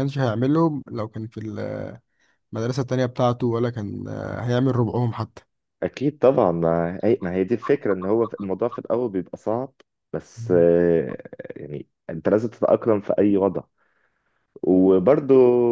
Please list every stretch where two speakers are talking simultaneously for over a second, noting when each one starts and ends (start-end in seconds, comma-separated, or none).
none